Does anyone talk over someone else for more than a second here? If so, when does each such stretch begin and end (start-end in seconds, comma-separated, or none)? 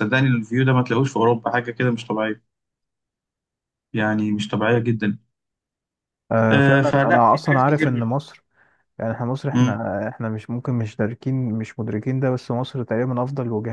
6.5-7.9